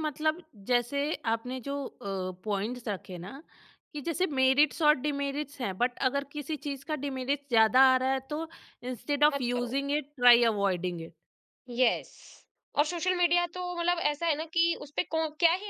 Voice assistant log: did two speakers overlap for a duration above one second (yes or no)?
no